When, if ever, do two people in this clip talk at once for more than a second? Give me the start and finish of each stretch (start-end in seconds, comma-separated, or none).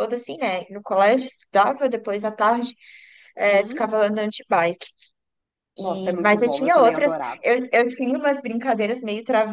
5.8-7.4